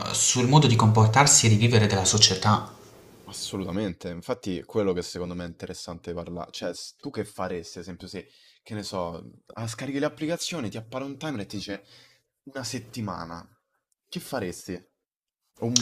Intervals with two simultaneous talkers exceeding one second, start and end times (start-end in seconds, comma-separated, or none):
none